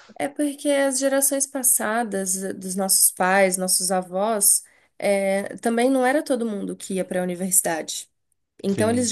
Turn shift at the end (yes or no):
no